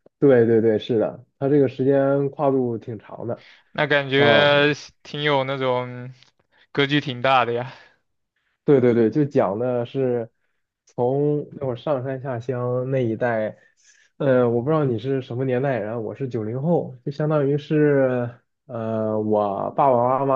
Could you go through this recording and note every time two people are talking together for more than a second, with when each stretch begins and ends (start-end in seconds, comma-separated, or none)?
none